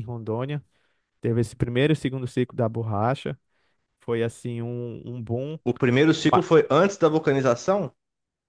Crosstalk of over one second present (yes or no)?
no